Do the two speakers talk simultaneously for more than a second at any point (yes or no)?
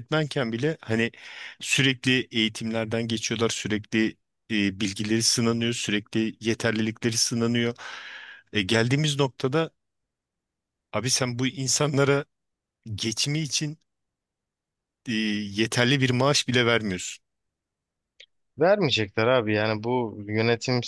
no